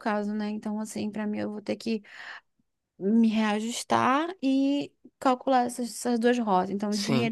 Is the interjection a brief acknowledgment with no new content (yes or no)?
yes